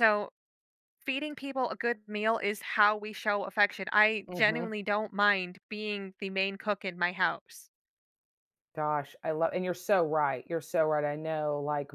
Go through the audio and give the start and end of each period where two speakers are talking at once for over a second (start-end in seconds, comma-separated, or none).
none